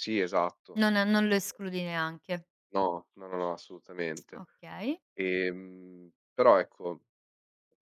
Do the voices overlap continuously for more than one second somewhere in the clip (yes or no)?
no